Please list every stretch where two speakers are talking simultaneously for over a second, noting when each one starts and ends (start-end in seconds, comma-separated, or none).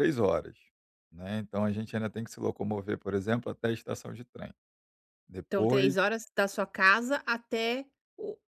none